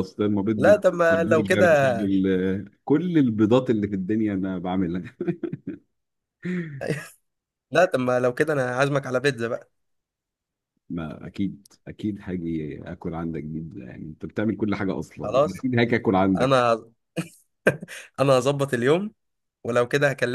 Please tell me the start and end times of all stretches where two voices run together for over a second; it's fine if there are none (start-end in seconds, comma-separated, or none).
0.6-2.0